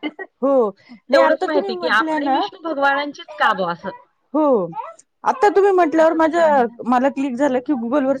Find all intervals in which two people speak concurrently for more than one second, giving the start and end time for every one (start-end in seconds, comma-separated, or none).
1.1-2.4